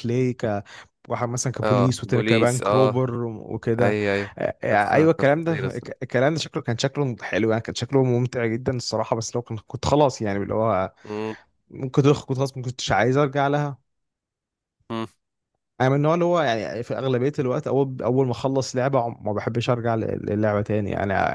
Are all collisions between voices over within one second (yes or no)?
no